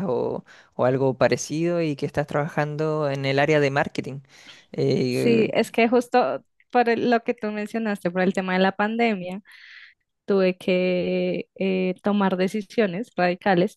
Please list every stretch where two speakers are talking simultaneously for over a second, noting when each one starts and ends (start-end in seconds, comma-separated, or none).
none